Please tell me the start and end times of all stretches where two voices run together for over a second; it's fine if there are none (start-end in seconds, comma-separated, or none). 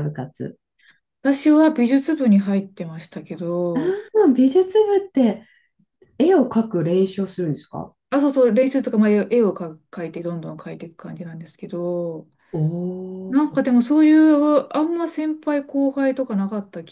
none